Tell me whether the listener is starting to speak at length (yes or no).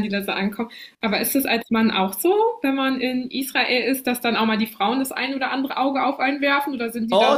yes